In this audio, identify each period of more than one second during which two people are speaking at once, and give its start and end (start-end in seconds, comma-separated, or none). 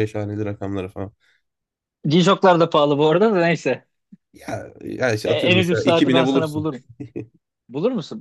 5.2-6.7